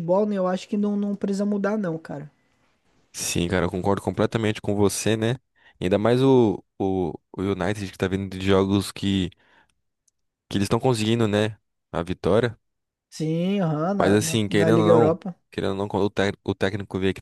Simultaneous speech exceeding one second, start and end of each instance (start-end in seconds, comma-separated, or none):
14.0-15.3